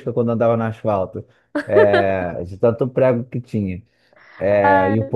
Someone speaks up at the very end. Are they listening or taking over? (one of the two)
listening